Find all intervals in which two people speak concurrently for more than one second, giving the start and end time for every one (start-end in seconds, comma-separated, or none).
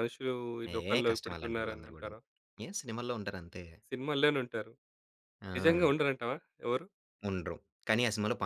0.7-2.2